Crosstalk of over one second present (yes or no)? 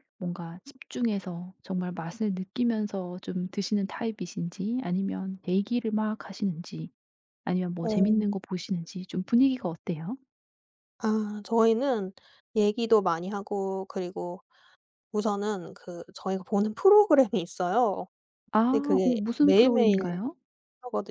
yes